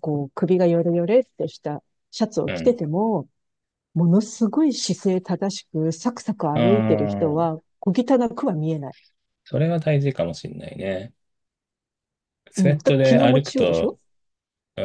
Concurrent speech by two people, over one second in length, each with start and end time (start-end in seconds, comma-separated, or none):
12.6-14.0